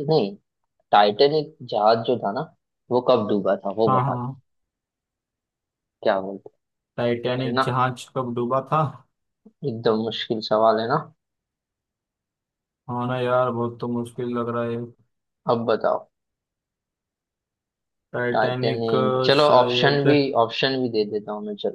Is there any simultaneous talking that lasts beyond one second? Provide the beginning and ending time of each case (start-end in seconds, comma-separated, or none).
18.3-20.0